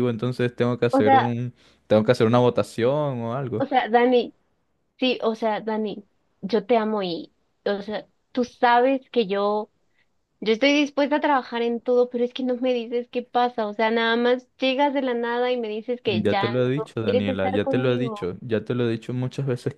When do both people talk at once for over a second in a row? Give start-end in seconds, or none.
16.1-18.3